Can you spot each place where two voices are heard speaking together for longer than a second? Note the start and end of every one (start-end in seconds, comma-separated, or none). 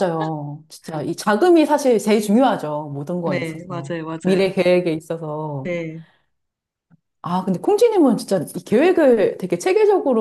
3.2-4.6